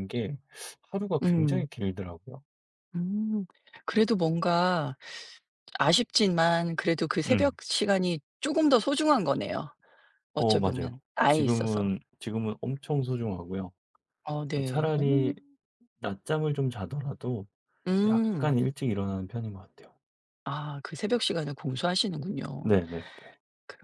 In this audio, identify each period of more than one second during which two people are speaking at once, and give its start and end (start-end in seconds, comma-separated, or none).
10.3-11.9